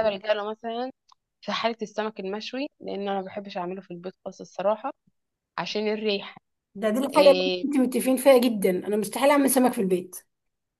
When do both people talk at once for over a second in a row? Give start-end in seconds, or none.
none